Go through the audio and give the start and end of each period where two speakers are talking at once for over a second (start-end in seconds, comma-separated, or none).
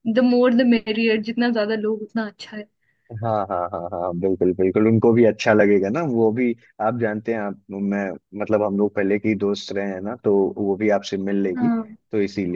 none